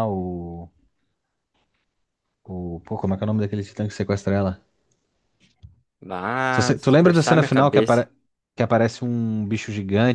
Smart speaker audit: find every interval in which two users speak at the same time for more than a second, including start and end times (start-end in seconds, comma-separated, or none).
6.5-8.1